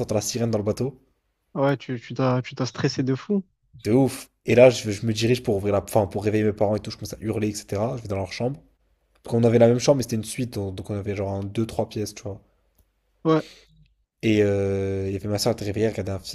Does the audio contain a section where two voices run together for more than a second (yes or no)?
no